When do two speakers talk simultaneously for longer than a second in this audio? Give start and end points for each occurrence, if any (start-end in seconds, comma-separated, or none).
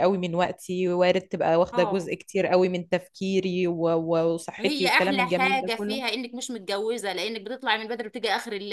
4.6-6.0